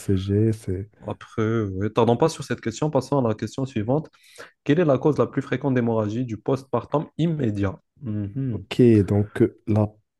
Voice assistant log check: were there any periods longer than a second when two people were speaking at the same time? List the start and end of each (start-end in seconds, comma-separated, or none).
none